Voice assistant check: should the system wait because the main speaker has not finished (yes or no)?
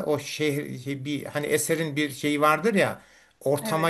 yes